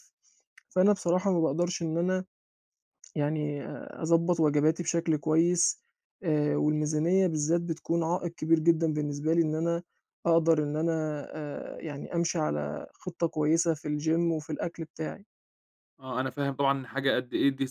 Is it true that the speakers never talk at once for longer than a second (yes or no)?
yes